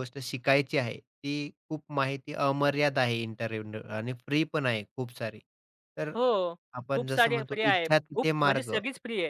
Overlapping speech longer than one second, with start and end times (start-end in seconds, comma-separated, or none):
7.0-8.7